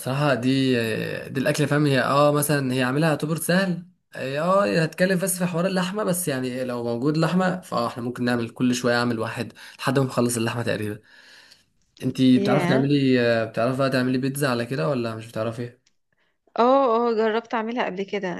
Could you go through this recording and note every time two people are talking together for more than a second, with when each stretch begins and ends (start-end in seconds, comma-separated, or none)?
none